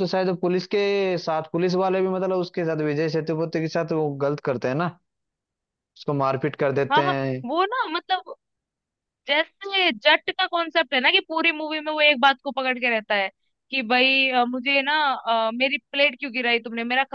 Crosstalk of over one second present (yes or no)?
no